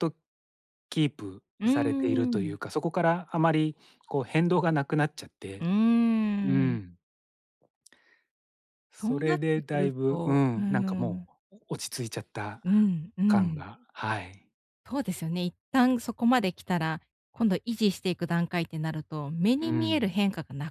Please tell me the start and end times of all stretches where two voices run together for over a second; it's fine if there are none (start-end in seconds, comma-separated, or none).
9.0-11.3